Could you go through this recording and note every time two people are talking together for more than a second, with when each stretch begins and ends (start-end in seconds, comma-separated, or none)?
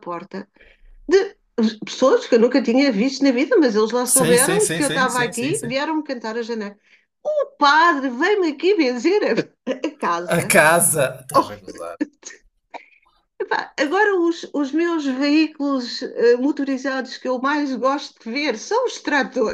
4.1-5.7